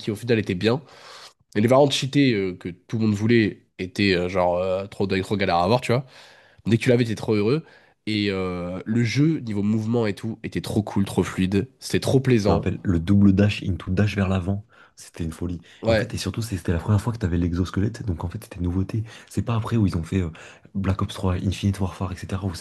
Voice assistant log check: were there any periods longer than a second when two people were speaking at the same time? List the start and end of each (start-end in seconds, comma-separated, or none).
none